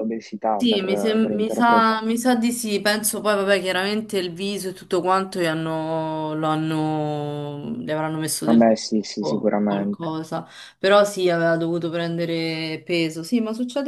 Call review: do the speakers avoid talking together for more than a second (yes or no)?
no